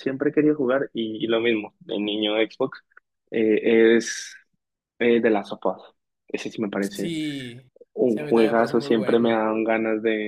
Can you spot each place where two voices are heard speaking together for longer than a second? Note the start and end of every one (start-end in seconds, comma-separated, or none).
8.1-9.4